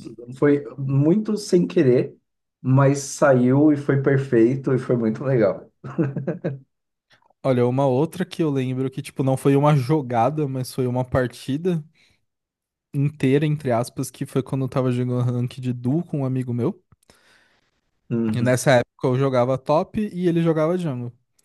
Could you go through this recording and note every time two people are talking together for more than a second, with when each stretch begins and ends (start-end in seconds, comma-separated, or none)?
none